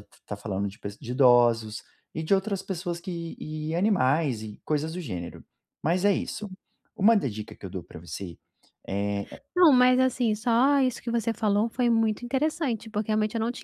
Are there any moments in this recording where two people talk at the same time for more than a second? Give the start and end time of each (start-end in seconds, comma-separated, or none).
none